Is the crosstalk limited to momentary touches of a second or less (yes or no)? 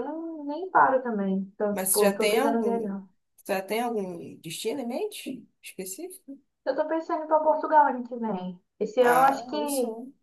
no